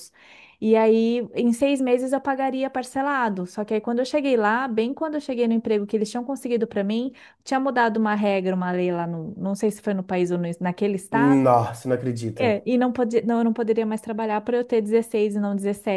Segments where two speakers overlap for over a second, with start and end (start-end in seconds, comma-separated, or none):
none